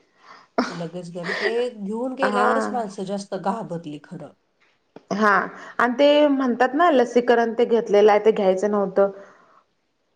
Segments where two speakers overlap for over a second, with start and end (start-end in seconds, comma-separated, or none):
none